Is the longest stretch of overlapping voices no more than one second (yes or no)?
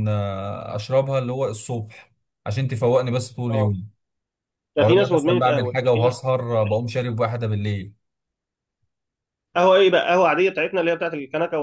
no